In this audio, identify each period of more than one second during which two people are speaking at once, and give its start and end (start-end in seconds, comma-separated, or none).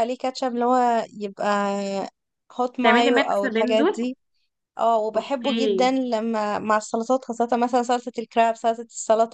2.8-4.1